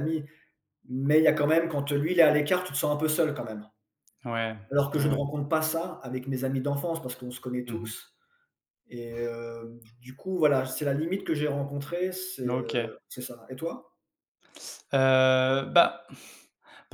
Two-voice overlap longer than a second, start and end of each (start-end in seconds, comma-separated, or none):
none